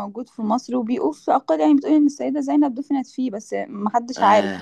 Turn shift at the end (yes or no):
yes